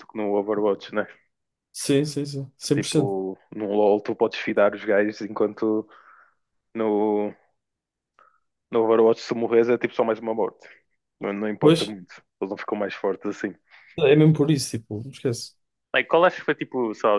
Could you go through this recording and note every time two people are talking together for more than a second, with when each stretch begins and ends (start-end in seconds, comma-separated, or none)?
none